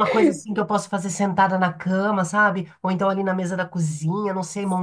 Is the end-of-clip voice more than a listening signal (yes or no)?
yes